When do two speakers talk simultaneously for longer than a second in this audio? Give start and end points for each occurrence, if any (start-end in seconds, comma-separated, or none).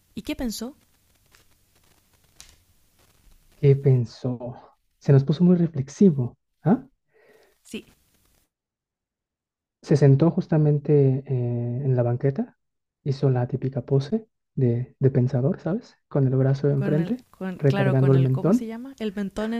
16.7-18.7